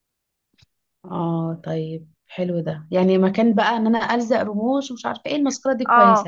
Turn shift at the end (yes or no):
yes